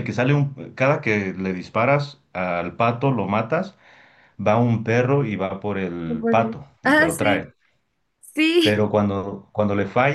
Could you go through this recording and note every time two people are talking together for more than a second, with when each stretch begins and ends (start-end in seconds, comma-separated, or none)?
6.1-7.5